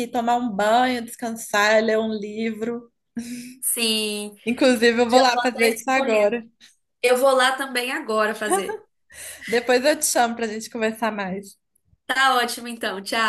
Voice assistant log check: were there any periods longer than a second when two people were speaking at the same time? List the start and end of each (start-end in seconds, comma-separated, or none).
5.1-6.4